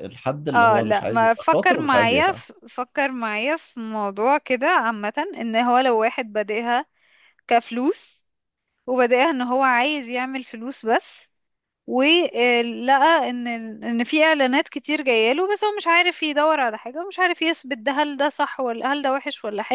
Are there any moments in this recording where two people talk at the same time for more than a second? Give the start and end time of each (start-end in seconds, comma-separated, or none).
0.5-2.4